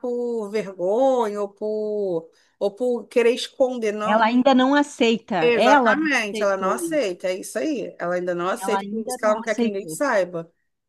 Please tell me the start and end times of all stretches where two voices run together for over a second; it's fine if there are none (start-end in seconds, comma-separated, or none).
5.4-7.1, 8.6-10.0